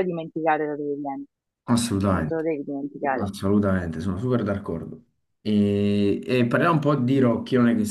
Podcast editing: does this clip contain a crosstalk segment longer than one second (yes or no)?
no